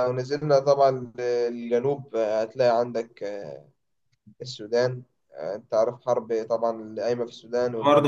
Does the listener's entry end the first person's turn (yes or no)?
yes